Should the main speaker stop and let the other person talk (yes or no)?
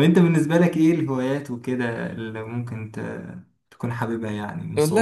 yes